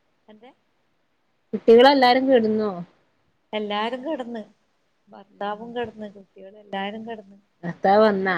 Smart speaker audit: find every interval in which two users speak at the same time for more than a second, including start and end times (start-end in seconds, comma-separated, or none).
none